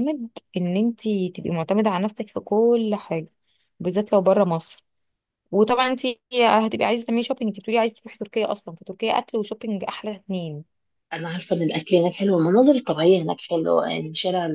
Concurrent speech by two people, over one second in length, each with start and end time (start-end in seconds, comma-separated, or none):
none